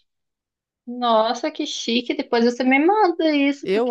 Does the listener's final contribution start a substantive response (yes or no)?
yes